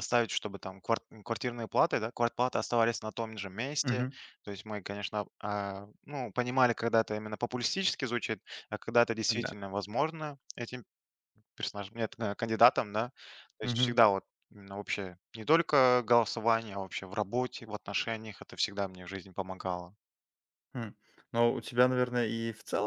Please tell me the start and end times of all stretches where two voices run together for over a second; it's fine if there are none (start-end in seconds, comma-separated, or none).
none